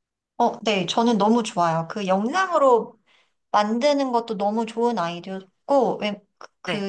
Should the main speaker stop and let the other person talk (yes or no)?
no